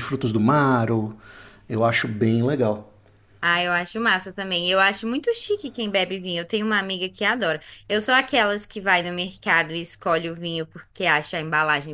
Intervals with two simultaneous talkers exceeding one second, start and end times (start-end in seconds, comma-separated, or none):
none